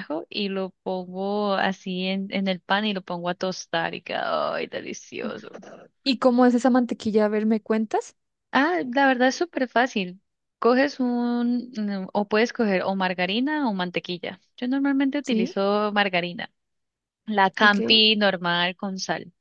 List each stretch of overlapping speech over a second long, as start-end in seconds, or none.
none